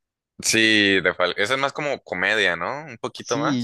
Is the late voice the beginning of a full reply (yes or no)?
yes